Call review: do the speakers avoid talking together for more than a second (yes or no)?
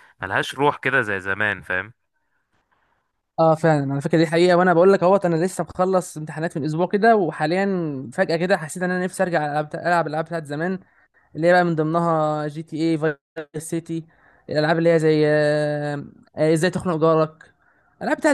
yes